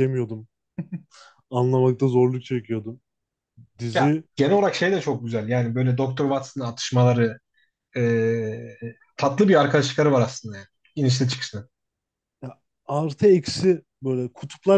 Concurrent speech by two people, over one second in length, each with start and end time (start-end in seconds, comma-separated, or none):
none